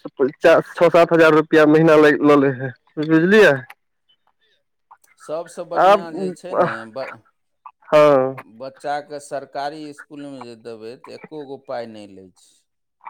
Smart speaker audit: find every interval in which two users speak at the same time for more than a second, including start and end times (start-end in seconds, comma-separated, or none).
none